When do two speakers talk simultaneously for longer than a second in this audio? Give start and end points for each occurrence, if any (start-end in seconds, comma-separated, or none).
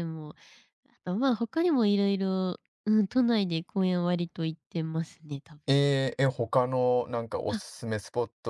none